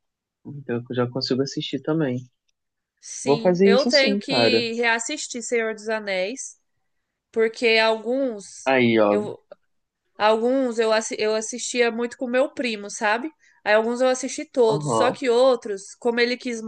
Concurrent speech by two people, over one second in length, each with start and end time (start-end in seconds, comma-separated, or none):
3.2-4.6